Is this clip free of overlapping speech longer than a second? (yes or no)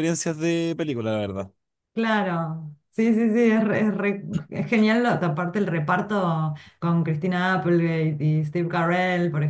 yes